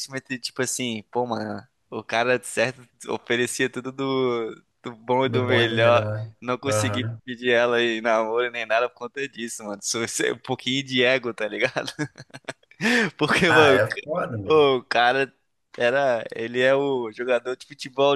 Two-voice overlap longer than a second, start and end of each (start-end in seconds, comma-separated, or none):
5.2-7.2